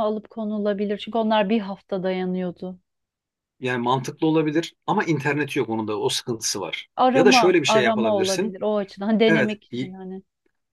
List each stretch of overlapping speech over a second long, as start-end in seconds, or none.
7.0-8.6